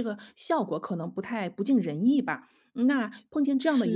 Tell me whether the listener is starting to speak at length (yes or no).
no